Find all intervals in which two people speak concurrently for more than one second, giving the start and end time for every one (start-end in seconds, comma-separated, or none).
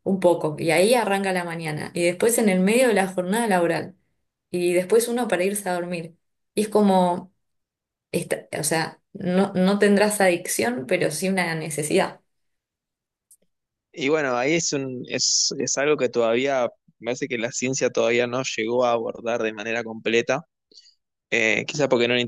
none